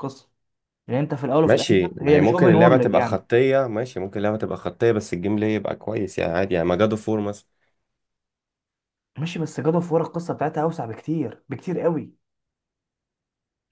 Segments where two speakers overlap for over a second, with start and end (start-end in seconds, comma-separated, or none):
1.4-3.2